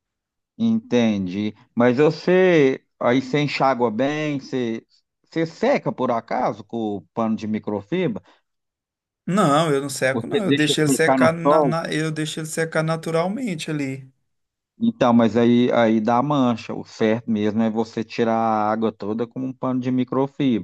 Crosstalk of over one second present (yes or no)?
yes